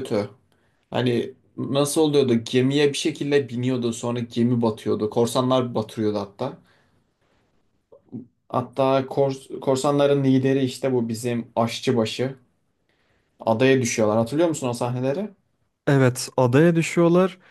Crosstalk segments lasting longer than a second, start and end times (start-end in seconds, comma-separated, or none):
none